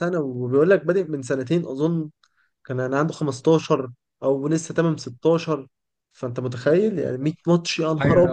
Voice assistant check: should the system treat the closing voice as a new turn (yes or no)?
no